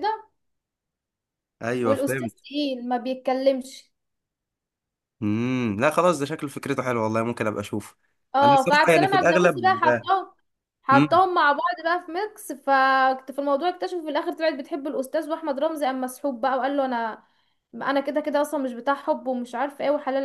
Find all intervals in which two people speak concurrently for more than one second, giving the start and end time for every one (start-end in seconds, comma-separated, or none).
8.4-9.8